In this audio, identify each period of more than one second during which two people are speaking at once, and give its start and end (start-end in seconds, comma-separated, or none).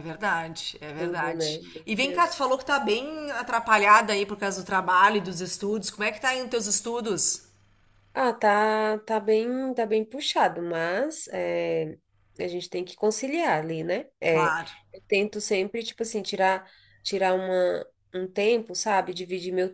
0.9-2.5